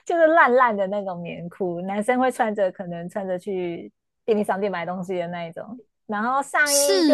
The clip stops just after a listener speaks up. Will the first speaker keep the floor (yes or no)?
yes